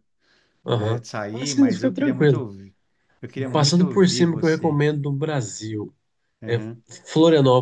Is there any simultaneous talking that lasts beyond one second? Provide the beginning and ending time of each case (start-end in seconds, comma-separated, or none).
0.8-2.5, 3.5-4.8